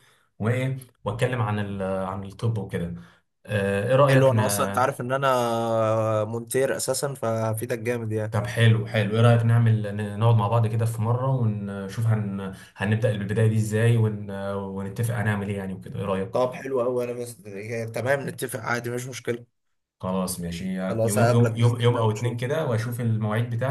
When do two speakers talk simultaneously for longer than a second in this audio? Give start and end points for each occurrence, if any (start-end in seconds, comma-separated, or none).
20.9-22.5